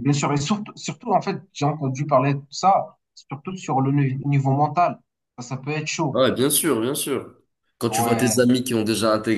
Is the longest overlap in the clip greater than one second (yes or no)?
no